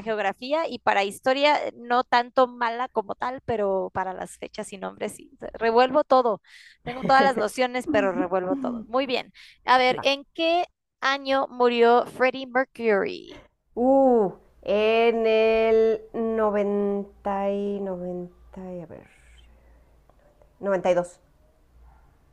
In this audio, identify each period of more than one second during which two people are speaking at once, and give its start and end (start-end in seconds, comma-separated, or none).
none